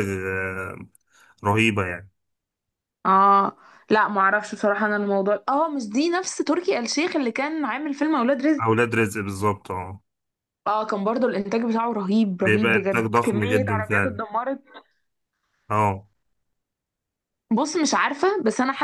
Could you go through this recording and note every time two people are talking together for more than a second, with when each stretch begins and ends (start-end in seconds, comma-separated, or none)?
12.4-14.2